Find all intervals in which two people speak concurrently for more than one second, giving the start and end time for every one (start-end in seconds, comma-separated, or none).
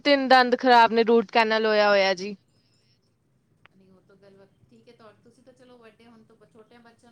none